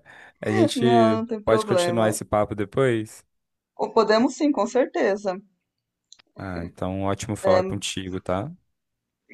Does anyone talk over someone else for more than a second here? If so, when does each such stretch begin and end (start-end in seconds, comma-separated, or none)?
0.7-2.2